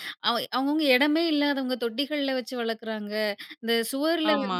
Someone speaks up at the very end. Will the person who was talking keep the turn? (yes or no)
yes